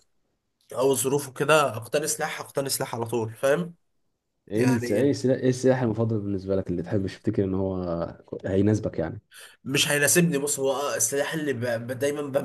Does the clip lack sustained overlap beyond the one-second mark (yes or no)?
yes